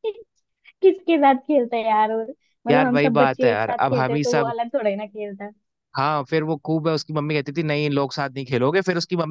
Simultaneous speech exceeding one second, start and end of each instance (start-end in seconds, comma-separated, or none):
2.7-4.5